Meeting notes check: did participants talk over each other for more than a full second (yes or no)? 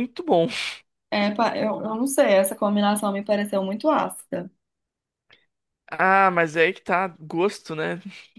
no